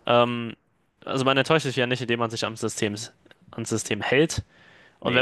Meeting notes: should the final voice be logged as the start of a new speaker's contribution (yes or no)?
no